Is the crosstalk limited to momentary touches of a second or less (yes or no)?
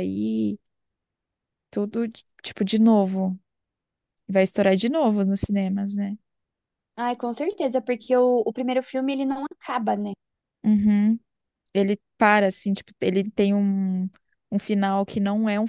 yes